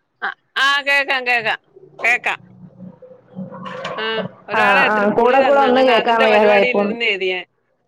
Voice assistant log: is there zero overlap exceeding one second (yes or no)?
no